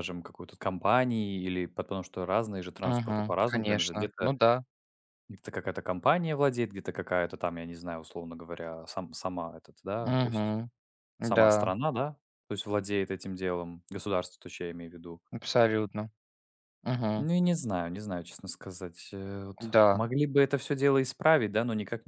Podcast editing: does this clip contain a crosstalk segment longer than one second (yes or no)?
yes